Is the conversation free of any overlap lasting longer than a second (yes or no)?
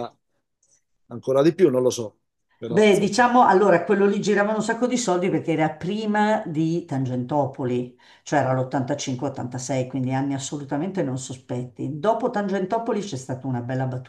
yes